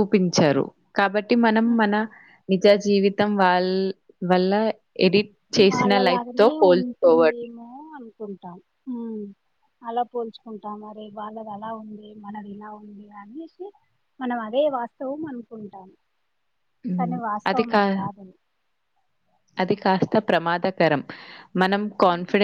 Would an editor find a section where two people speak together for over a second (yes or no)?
yes